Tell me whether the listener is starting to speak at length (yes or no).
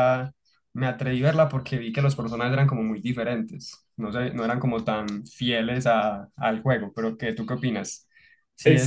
yes